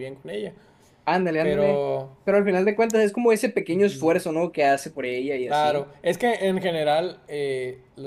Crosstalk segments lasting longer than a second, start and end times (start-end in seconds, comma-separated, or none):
none